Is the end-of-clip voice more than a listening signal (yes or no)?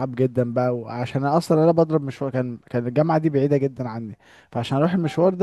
no